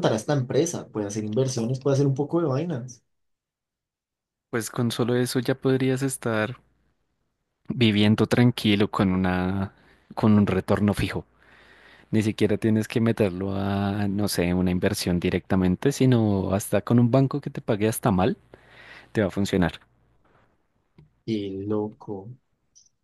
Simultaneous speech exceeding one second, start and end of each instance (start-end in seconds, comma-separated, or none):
none